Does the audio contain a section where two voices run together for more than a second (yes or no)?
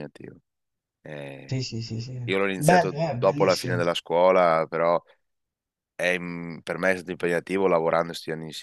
yes